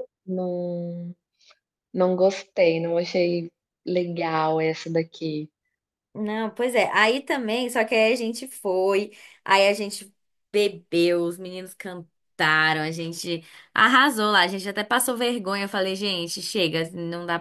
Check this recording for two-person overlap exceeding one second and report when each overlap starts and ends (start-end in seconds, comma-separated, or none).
none